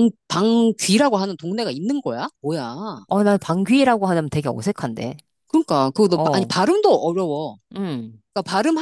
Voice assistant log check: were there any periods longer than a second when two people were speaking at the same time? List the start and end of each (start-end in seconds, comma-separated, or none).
none